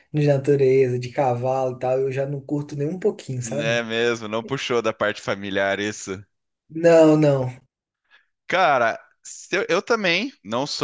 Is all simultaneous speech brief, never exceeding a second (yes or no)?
yes